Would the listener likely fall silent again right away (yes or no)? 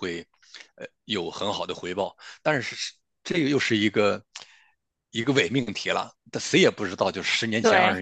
yes